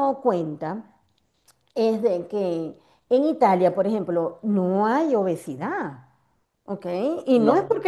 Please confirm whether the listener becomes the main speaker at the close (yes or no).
no